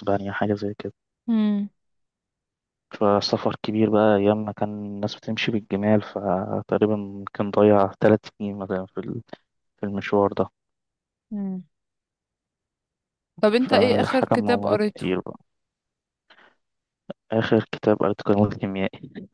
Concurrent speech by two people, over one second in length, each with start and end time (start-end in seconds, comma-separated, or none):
13.6-15.1